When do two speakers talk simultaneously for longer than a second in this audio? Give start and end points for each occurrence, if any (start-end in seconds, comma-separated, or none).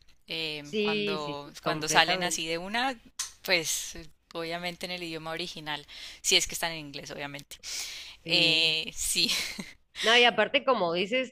0.6-2.6